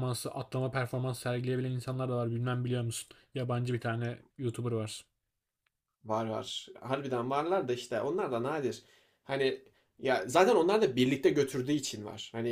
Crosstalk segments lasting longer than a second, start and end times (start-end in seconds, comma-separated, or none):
none